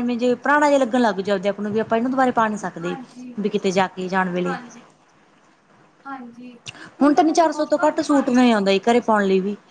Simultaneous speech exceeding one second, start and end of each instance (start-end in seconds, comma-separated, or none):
7.1-8.5